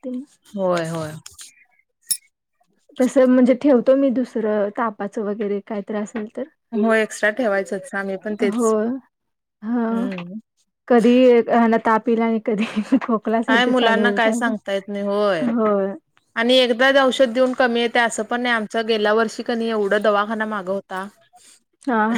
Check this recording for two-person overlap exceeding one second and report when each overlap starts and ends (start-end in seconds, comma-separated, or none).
none